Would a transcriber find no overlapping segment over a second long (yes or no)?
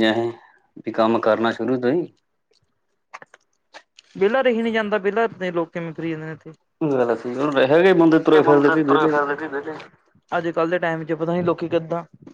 yes